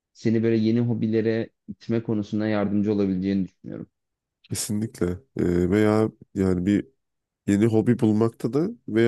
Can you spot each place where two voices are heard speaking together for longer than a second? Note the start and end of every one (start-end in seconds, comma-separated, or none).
none